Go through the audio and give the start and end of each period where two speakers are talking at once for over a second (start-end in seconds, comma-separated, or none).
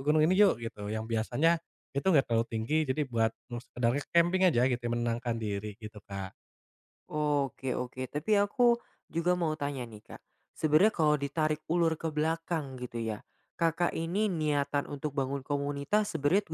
none